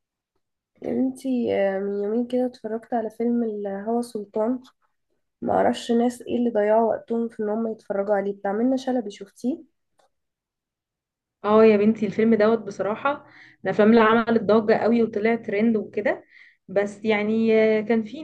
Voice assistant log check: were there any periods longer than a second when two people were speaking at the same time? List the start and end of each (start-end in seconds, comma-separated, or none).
none